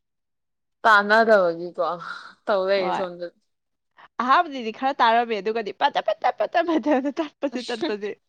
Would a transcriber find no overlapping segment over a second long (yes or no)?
yes